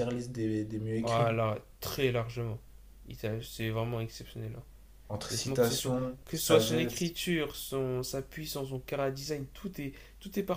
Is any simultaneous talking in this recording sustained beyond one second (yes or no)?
yes